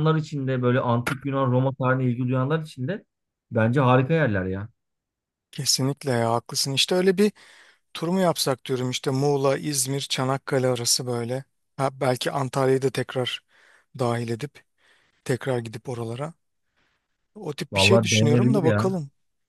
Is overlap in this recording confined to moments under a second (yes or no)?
no